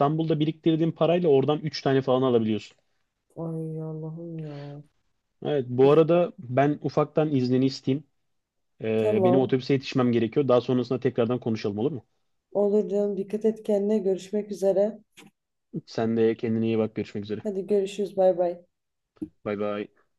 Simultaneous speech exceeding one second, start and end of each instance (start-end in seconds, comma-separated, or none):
none